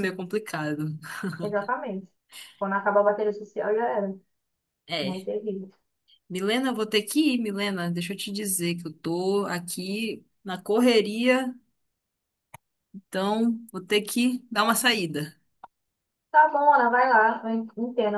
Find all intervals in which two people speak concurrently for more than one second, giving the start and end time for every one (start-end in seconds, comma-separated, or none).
none